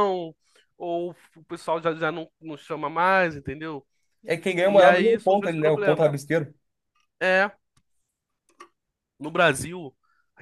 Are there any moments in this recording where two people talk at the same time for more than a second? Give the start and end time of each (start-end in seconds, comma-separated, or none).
4.6-6.1